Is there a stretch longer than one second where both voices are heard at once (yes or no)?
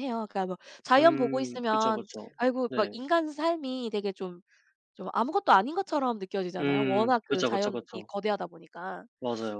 yes